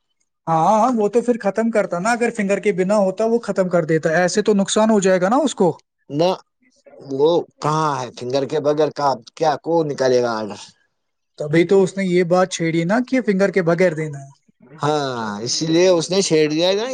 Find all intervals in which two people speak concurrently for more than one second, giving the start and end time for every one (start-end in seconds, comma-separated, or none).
none